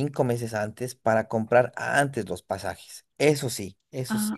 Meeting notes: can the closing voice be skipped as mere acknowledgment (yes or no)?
no